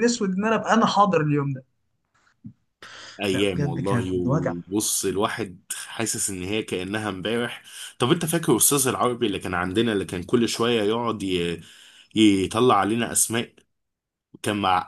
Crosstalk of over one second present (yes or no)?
yes